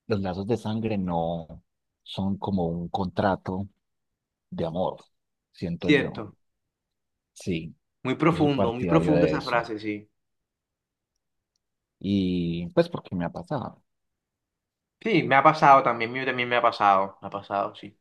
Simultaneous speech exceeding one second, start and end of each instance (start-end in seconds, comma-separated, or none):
8.3-9.7